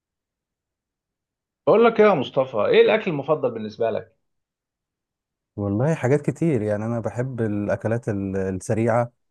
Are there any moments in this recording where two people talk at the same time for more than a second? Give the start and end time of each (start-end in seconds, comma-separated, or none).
none